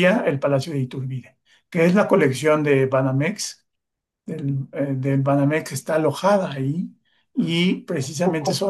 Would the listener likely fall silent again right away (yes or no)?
yes